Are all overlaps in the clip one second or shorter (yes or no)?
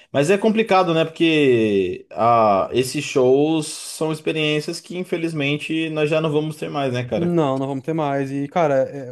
yes